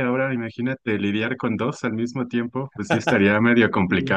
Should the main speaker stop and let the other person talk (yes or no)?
yes